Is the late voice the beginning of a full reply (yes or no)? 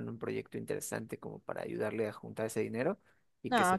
yes